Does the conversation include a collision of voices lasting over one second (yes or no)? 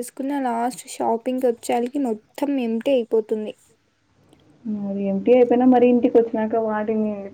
no